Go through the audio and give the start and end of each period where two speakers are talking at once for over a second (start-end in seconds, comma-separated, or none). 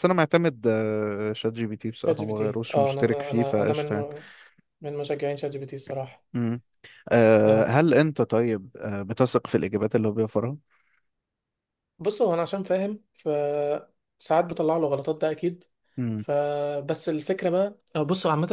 2.0-4.1